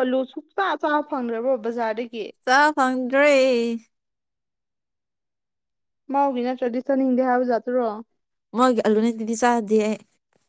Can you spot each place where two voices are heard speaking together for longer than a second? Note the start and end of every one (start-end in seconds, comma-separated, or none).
none